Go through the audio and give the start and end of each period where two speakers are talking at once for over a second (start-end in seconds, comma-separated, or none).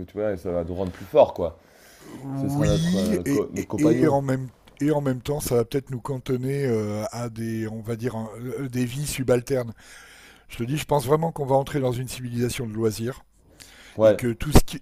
2.4-4.2